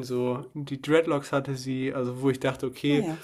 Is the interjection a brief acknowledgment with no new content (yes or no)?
yes